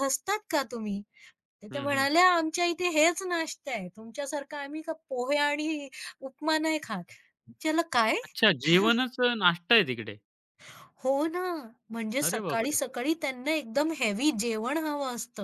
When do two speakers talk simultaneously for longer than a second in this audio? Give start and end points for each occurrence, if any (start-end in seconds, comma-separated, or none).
none